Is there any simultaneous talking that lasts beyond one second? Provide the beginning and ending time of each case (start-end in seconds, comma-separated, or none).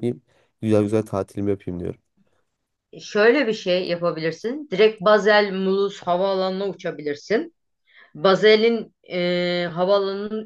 none